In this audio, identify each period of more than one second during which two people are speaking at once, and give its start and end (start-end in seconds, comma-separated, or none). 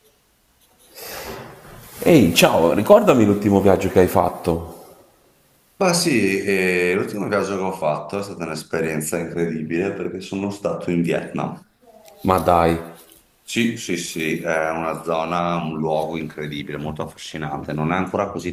none